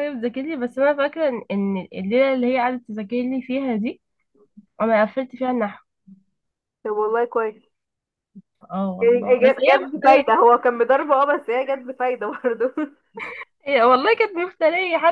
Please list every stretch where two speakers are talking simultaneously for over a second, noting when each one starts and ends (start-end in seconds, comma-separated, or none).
9.0-10.4